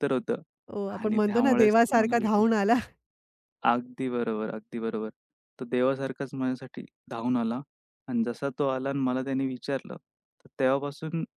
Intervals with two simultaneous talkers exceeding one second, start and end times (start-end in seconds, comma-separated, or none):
1.0-2.5